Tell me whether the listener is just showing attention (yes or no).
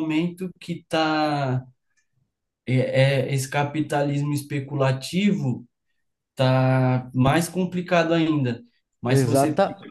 yes